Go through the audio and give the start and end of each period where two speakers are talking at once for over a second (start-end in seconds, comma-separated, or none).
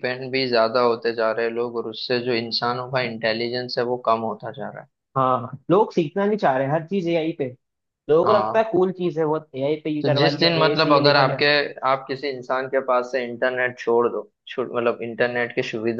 10.0-11.4